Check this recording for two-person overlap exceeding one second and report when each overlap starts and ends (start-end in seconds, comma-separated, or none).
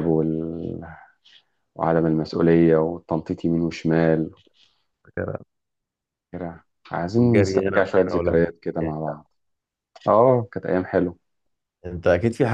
7.2-8.5